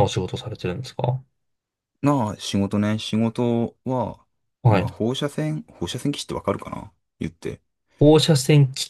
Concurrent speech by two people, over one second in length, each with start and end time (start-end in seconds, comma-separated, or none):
none